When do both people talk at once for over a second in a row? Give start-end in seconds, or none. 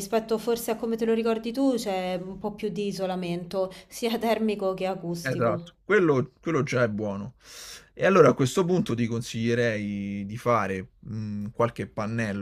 none